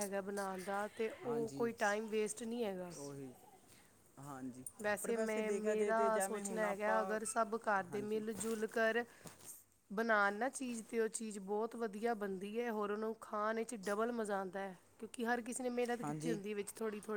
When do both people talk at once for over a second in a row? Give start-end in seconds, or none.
5.0-7.0